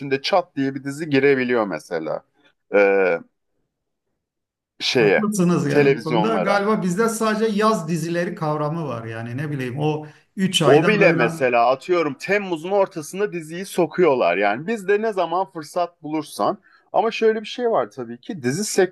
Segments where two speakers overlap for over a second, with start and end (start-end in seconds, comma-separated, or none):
5.0-6.6